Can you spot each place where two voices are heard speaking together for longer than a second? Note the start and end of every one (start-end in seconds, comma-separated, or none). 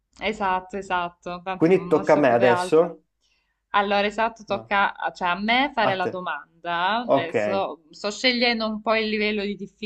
1.5-2.9